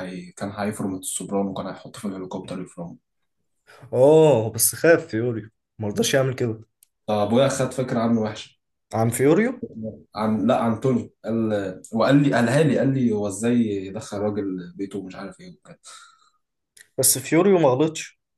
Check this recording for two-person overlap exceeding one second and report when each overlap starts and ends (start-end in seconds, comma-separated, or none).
none